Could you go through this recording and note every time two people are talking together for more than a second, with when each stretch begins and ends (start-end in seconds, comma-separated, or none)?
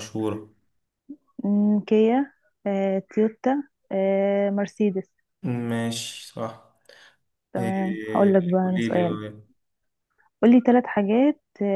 7.6-9.2